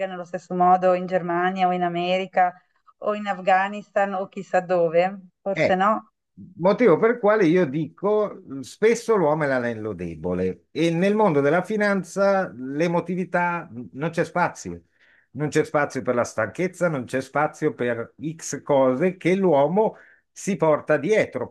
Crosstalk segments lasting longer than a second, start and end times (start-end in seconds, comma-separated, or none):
none